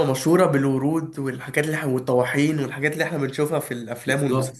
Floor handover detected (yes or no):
yes